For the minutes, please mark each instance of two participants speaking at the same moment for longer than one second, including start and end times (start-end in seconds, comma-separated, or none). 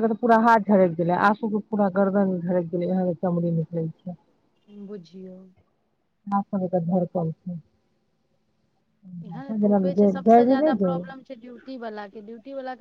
9.7-11.2